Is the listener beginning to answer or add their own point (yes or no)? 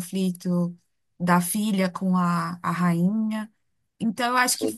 no